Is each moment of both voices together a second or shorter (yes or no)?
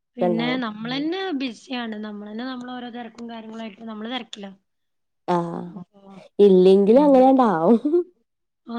yes